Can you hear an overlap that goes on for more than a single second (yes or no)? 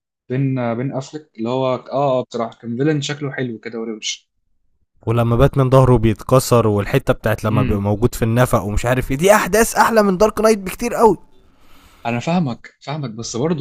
no